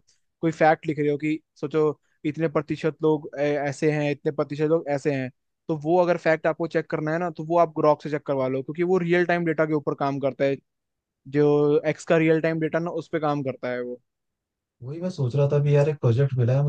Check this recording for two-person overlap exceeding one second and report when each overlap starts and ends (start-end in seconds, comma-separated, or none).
none